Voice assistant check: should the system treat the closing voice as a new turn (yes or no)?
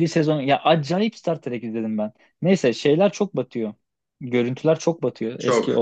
no